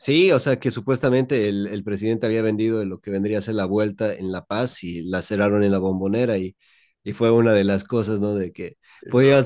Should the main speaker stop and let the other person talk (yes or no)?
no